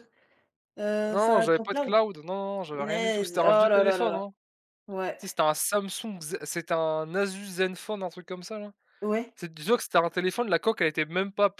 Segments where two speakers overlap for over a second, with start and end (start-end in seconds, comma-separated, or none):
2.7-4.2